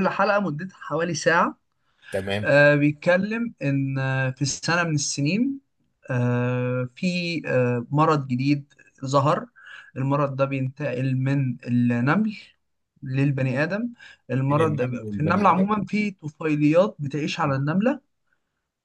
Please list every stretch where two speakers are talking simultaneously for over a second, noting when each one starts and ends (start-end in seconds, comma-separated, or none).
14.5-15.7